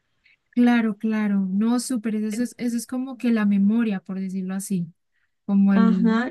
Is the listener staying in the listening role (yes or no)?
no